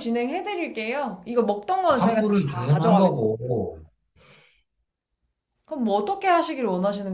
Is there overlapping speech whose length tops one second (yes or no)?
yes